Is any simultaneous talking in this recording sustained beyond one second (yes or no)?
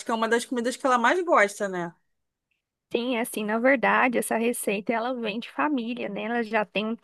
no